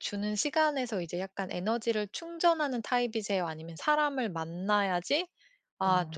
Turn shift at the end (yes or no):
no